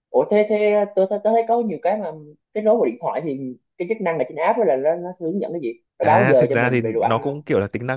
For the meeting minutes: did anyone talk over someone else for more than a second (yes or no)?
yes